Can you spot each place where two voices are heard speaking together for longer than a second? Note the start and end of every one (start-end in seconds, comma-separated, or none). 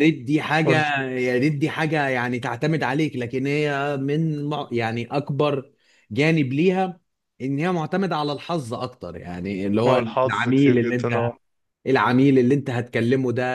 9.8-11.2